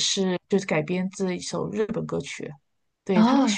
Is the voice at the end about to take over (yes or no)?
no